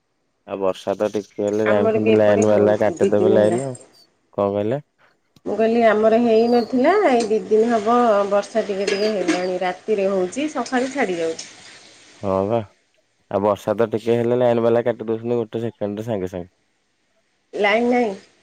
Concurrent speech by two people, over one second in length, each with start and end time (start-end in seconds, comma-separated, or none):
1.7-3.6